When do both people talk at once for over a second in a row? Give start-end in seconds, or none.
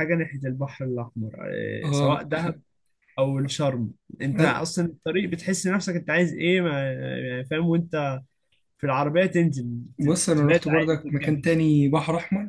10.0-11.4